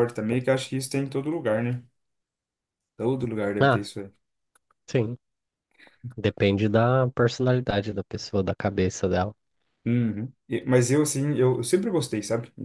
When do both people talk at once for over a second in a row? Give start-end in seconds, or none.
none